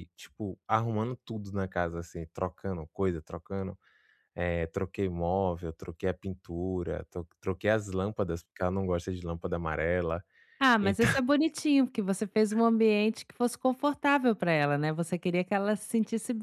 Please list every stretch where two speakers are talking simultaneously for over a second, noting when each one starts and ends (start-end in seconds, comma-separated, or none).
none